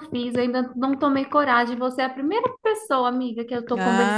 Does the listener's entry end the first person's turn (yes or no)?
yes